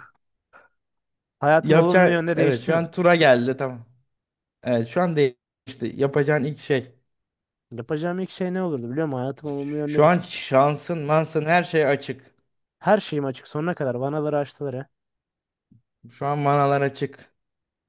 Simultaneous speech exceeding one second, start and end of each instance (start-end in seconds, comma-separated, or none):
1.6-2.8